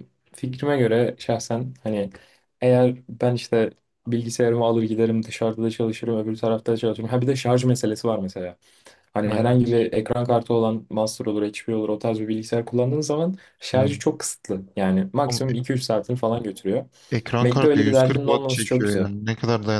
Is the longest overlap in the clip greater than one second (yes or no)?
yes